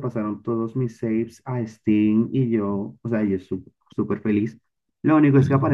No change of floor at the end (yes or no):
yes